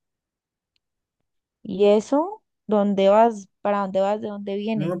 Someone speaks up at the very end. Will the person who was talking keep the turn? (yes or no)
no